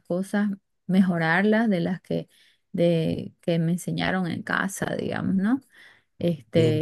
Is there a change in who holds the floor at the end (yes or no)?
yes